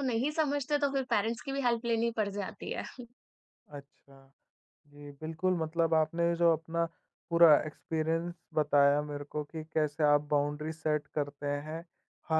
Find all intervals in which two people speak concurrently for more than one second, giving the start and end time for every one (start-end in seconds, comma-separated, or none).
none